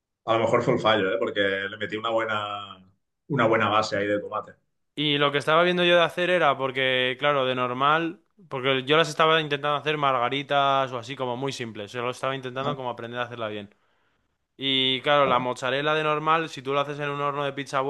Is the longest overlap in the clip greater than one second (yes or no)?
no